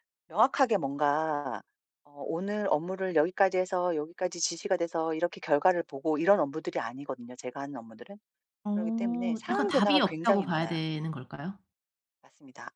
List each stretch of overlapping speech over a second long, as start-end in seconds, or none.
8.7-10.8